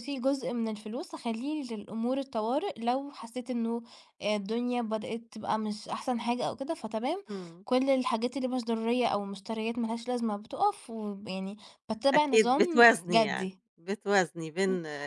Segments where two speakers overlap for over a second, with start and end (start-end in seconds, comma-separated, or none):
12.1-13.6